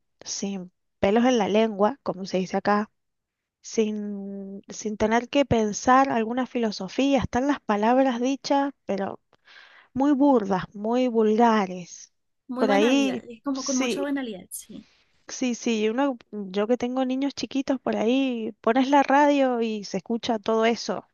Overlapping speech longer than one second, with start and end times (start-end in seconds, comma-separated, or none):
12.6-14.1